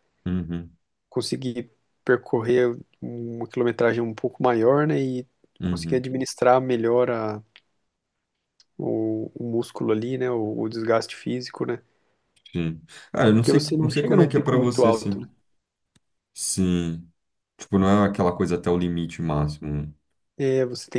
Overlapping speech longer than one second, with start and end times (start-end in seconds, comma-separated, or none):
13.3-15.3